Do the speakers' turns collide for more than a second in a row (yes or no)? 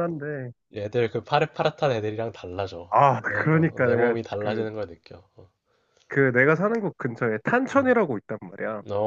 yes